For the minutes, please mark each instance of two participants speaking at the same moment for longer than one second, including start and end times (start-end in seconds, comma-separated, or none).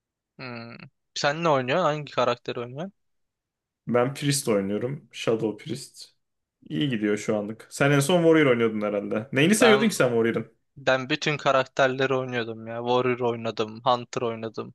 none